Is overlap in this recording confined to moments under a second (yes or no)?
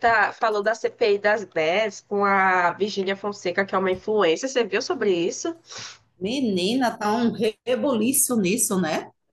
yes